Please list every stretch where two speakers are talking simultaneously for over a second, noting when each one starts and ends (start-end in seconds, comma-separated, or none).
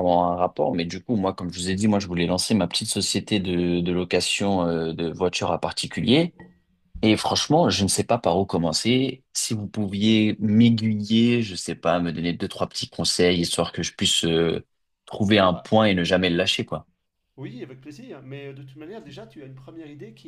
none